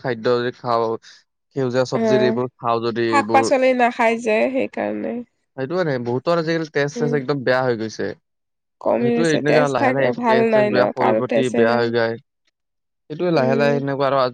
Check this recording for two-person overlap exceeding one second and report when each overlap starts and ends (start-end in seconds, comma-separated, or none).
8.8-11.8